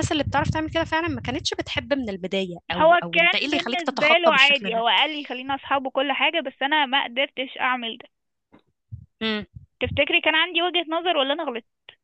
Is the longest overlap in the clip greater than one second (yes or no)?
yes